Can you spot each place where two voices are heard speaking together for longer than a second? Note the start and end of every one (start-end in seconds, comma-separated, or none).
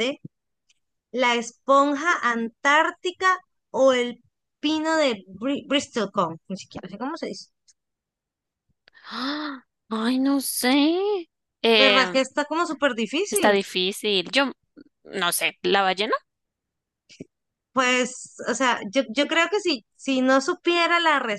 none